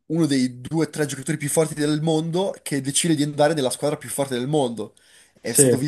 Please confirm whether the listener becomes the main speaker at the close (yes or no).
no